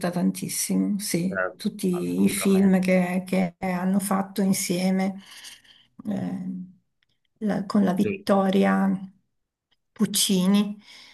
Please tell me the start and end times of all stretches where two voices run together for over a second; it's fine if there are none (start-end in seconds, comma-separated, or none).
1.3-2.8